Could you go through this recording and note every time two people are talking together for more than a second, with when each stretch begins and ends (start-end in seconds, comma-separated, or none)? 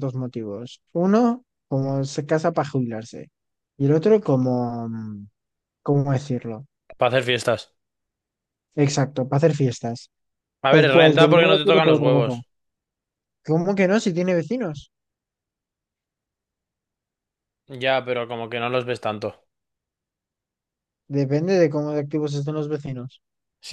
10.7-12.4